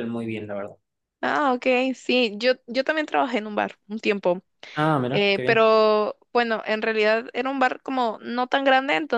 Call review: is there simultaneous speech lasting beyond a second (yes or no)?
no